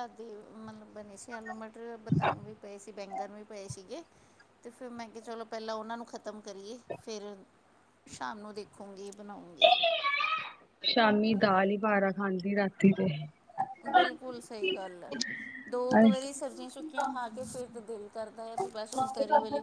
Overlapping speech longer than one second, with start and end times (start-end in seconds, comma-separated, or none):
none